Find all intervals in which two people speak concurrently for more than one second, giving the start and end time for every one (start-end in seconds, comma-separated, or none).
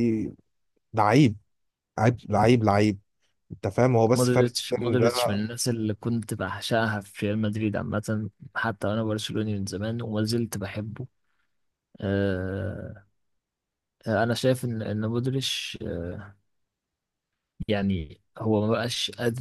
4.1-5.4